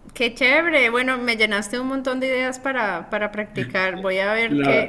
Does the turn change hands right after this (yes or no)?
yes